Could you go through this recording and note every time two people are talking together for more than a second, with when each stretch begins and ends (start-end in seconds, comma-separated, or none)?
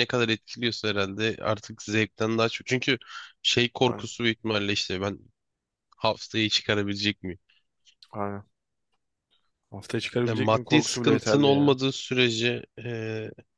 10.2-11.8